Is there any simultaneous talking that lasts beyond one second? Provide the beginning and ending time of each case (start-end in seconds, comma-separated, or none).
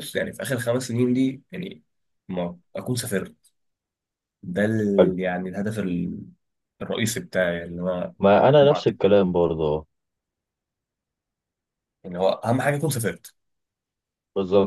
none